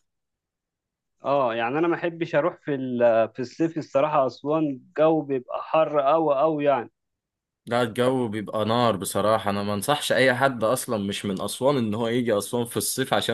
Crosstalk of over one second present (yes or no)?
no